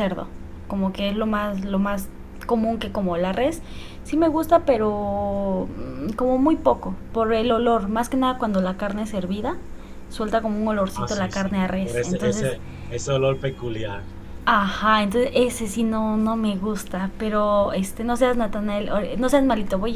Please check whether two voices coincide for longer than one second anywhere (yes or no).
yes